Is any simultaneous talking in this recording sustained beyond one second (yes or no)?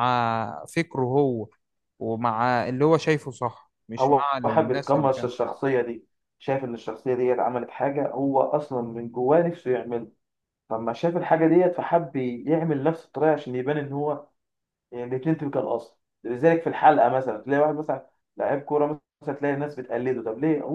yes